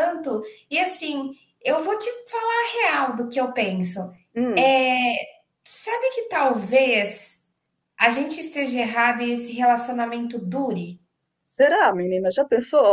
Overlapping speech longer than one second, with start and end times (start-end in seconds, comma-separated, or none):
none